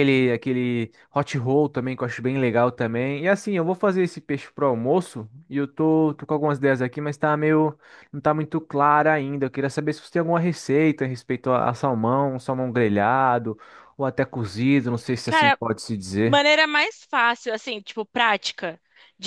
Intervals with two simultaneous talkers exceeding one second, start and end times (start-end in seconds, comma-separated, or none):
none